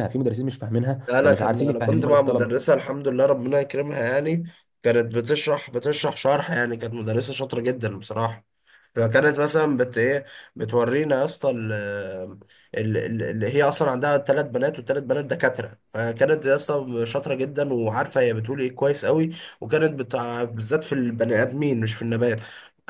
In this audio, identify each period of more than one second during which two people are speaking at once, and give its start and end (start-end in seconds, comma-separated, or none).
1.1-2.7